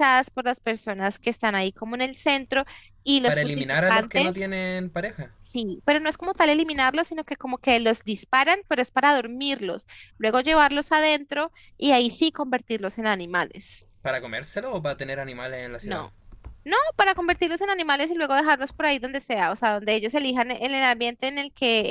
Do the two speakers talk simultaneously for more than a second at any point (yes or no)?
yes